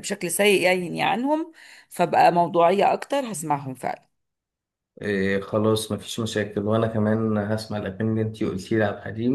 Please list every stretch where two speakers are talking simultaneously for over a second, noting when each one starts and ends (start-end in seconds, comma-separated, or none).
none